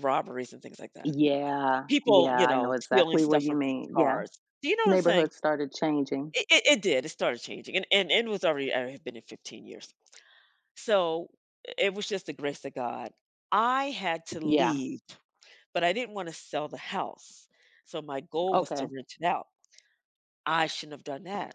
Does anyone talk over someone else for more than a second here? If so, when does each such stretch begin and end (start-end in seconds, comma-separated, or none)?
1.9-4.2